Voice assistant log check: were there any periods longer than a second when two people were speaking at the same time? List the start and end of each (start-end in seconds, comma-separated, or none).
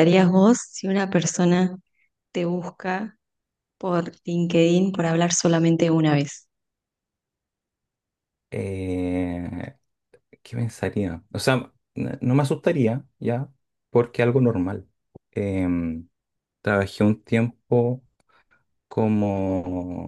none